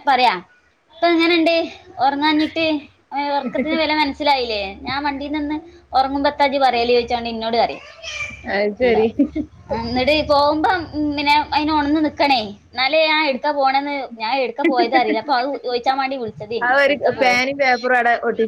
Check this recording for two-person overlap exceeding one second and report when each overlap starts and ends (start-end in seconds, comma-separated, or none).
none